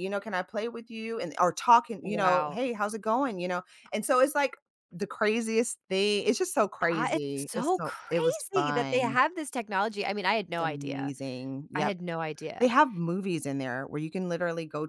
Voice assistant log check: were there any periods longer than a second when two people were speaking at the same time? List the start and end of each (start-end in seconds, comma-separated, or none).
6.9-9.2